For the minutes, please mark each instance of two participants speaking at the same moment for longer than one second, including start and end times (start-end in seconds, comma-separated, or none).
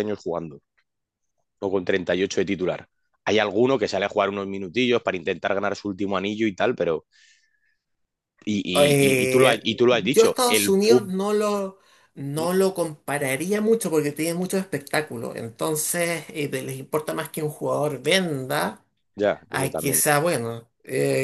8.8-11.1